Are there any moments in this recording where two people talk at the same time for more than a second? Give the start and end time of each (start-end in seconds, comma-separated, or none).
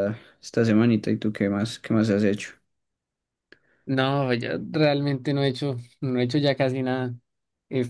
none